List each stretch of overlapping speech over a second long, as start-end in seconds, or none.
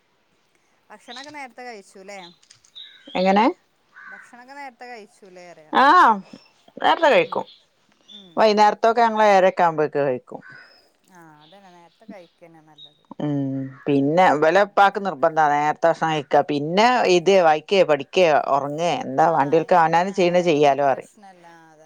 19.3-21.1